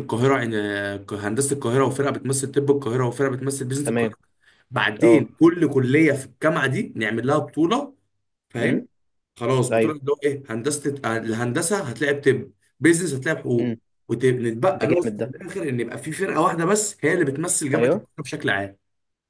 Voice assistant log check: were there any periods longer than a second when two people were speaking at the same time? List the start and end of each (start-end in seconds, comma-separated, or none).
none